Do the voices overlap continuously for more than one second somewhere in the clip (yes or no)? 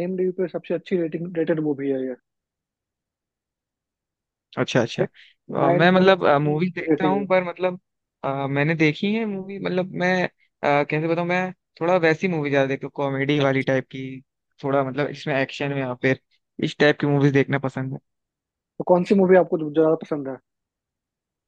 yes